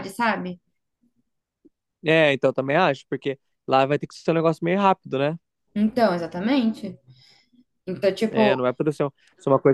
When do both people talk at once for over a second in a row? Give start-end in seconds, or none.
none